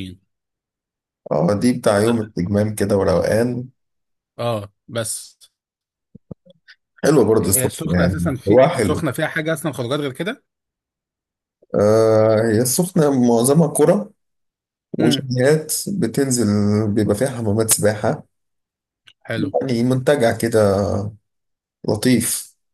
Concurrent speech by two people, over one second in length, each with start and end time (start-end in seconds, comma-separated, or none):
7.4-9.0